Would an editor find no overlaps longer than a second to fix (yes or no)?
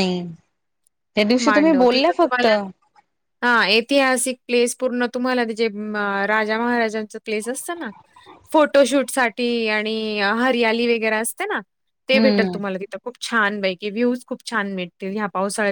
yes